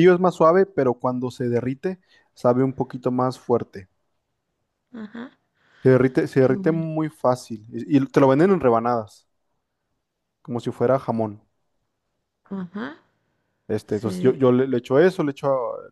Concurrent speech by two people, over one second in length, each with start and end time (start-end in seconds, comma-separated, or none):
none